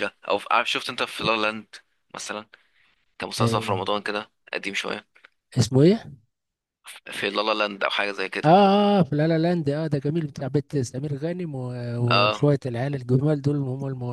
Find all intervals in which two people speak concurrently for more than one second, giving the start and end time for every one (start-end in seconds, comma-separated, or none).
none